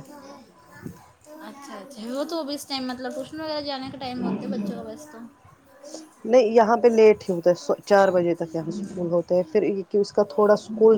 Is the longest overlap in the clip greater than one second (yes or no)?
no